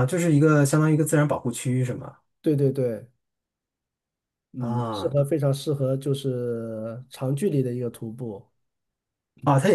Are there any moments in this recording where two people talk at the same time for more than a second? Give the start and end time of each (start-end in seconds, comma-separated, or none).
none